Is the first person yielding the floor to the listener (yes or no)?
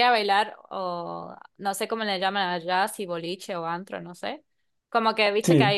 no